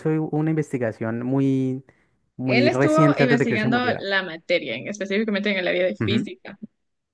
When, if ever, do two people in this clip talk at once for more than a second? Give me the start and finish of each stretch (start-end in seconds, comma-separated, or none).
2.4-4.1